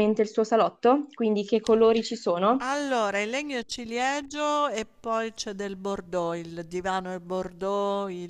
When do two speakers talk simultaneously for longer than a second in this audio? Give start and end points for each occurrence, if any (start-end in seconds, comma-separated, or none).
none